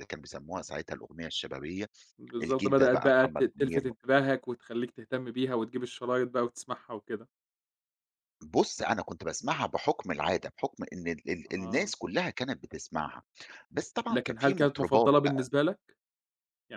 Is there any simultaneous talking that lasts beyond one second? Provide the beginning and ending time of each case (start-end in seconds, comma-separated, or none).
2.4-3.8, 14.1-15.5